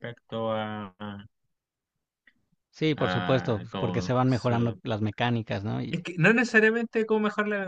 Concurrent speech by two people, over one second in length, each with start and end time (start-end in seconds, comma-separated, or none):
3.0-4.8